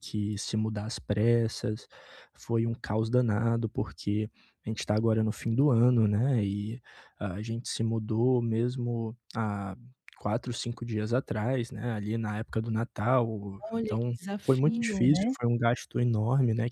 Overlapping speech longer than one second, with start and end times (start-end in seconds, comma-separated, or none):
13.6-15.3